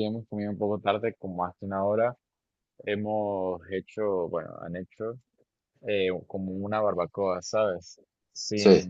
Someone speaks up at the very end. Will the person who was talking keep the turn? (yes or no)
yes